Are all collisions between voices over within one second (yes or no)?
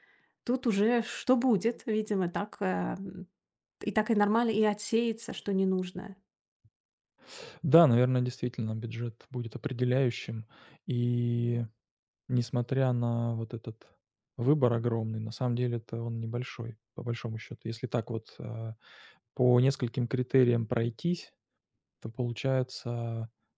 yes